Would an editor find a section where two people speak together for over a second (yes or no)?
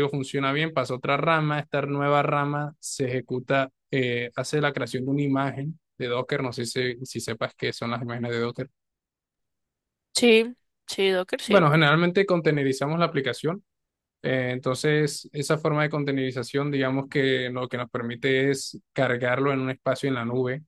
no